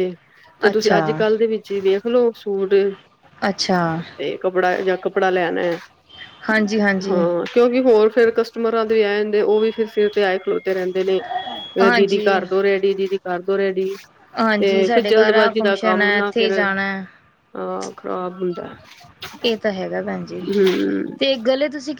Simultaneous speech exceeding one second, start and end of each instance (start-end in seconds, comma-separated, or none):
14.6-16.5